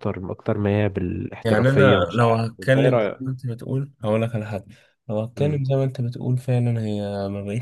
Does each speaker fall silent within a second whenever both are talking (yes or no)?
no